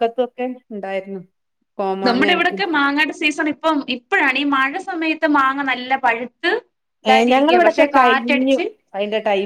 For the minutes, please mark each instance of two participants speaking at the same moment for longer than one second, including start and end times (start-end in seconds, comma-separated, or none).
7.1-8.6